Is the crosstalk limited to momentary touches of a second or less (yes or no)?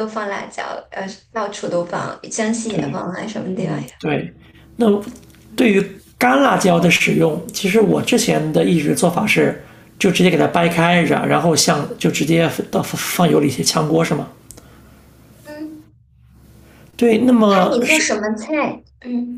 yes